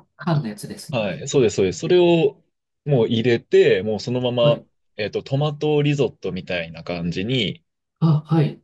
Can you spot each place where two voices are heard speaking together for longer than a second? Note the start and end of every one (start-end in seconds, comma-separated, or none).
none